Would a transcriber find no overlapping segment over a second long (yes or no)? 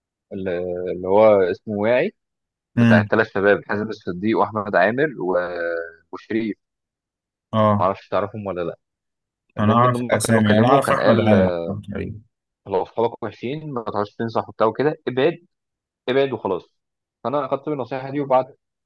no